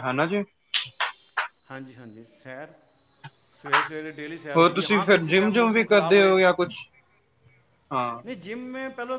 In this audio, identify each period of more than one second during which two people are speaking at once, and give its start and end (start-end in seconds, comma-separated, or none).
4.6-6.3